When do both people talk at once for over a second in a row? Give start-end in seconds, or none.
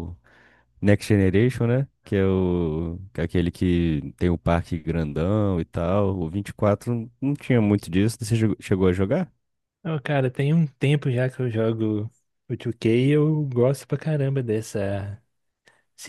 none